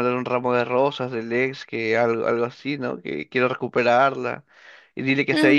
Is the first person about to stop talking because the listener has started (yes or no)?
yes